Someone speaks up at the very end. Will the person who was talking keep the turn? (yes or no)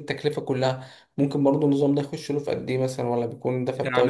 no